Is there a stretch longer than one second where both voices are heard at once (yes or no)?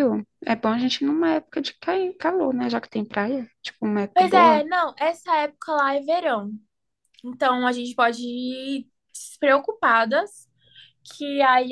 no